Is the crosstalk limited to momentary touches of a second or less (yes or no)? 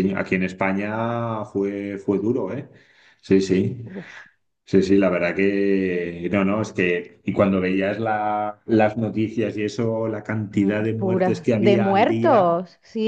no